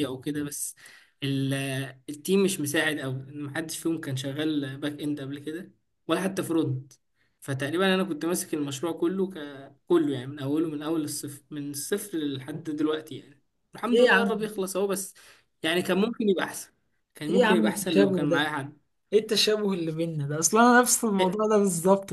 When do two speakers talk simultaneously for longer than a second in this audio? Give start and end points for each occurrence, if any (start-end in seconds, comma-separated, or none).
17.3-18.5